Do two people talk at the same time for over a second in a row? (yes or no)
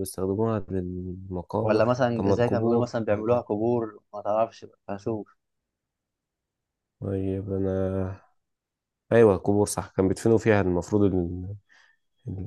yes